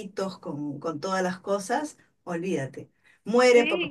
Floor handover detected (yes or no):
yes